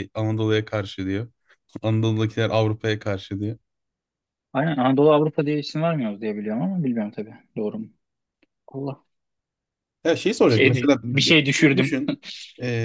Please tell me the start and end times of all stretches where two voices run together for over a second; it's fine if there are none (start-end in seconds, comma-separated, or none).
10.4-11.9